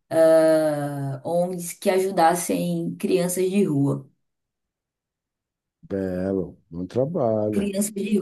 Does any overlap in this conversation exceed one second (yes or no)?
no